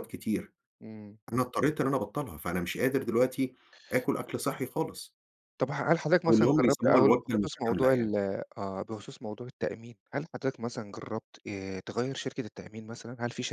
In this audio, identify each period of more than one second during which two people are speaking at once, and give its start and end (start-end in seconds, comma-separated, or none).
6.2-8.1